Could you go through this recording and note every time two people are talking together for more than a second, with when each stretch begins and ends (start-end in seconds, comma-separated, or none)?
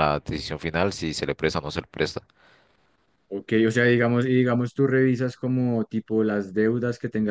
none